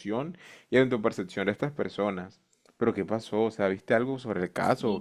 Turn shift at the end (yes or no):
yes